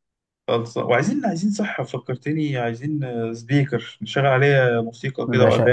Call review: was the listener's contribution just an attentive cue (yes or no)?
no